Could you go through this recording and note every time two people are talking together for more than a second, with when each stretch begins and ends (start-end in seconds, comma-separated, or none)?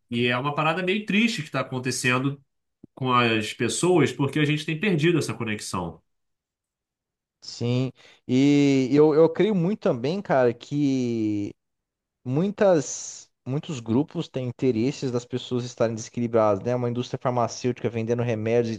none